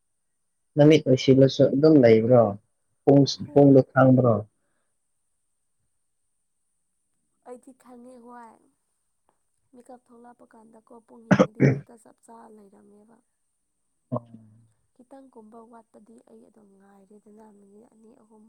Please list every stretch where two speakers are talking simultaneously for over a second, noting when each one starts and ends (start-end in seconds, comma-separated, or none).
none